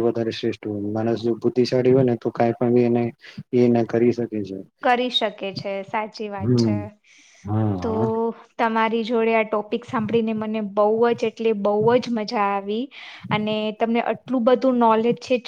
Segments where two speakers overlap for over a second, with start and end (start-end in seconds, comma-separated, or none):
none